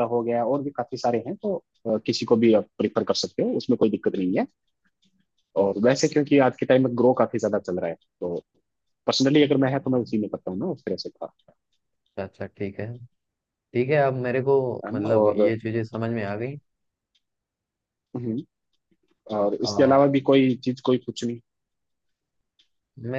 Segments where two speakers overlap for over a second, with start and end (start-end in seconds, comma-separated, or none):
none